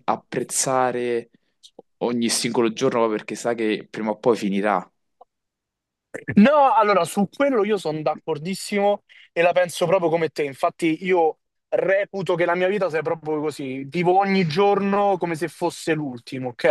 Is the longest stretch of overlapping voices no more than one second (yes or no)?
yes